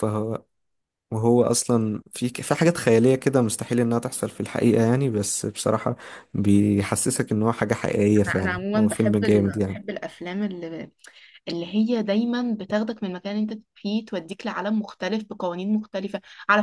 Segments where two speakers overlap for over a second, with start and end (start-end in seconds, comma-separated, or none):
8.3-9.8